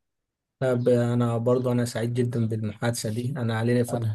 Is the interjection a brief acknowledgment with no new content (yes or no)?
yes